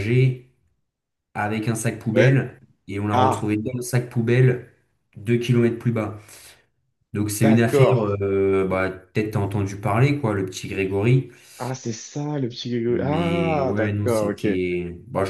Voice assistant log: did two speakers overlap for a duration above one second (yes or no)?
yes